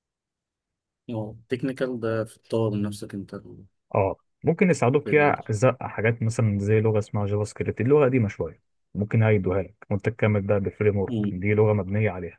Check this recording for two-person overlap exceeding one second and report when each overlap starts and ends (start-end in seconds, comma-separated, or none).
none